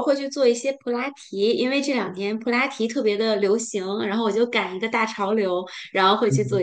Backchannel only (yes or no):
yes